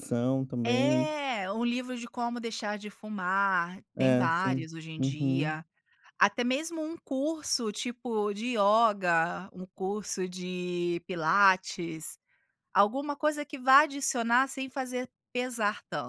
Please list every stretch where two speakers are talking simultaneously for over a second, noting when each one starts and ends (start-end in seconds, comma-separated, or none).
4.0-5.6